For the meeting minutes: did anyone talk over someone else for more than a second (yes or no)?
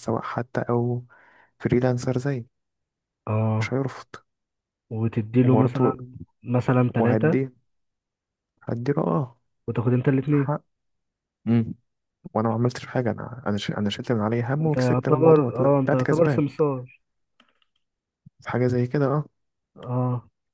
yes